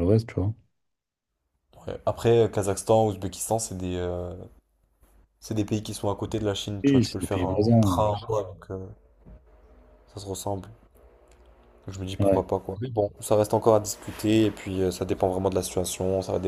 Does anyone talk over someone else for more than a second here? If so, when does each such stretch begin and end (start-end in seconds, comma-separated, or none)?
6.8-8.2